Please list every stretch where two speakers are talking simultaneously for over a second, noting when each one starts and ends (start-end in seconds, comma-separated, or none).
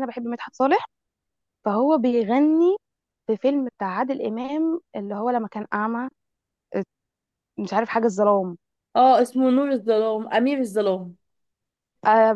none